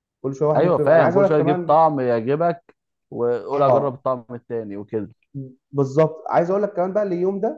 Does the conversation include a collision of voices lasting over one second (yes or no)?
yes